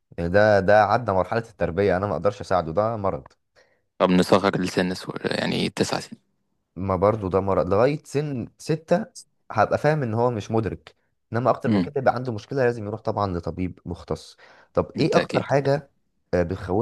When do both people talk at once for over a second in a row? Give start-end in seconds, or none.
none